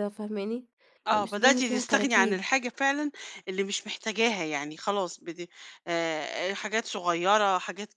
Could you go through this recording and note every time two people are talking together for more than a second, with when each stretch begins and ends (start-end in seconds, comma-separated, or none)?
1.1-2.5